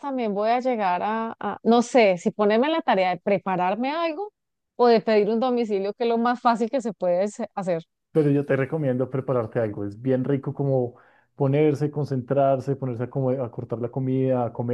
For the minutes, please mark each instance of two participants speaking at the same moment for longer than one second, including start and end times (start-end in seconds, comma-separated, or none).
none